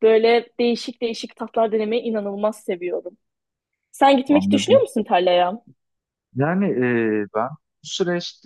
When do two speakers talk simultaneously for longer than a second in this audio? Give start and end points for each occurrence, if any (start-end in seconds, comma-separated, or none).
none